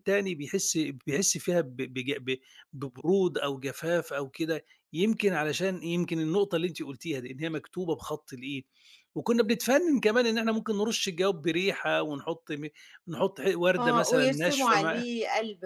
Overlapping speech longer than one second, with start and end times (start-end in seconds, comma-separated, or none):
13.8-15.0